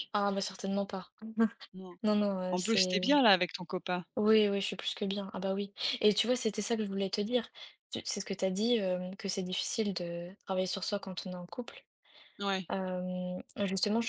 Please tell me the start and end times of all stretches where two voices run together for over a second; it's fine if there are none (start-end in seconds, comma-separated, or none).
none